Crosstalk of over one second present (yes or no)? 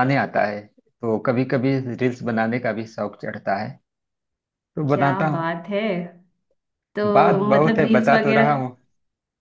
yes